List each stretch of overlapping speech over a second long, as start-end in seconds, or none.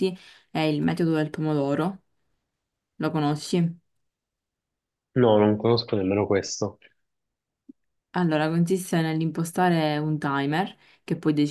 none